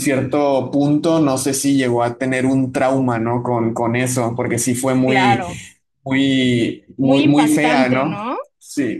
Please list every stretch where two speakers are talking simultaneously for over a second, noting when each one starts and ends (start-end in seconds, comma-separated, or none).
7.0-8.4